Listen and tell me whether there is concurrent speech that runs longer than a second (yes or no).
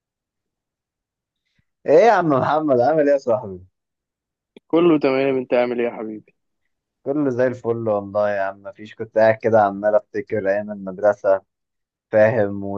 no